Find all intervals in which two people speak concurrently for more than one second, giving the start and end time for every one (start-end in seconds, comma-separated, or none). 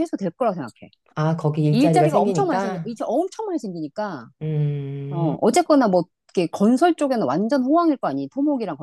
1.7-2.9